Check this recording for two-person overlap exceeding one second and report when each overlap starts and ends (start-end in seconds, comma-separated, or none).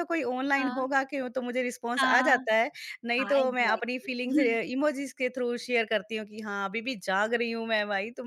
3.2-4.6